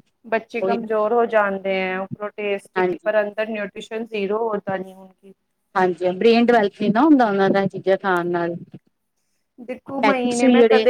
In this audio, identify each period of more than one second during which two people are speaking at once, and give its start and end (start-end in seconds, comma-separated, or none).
none